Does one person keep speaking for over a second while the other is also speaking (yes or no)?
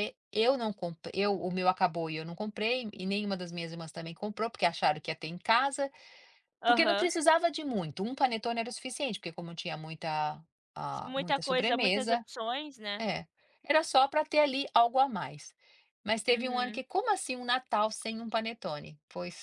yes